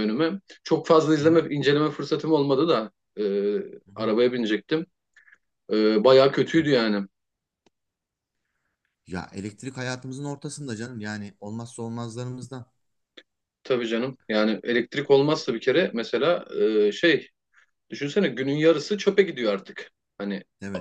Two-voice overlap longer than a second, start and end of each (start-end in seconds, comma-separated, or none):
none